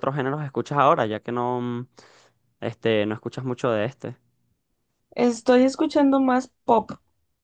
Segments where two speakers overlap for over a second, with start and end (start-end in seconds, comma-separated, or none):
none